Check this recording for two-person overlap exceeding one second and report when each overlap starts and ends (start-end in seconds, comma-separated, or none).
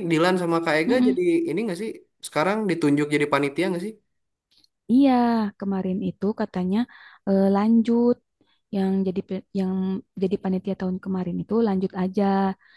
none